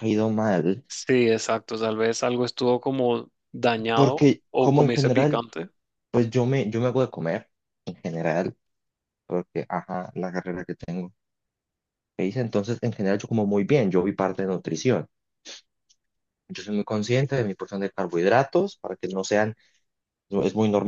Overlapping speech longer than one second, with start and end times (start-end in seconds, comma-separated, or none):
3.9-5.4